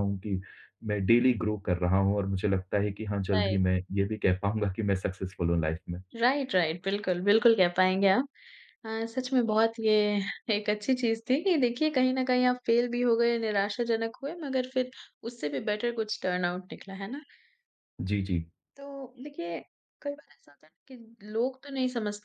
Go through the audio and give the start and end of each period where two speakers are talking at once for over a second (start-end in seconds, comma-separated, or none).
none